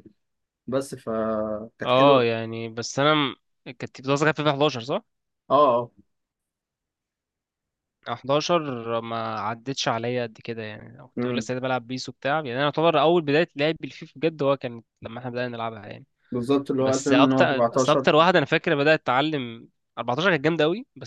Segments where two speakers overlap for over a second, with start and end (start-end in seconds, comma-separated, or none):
16.8-18.1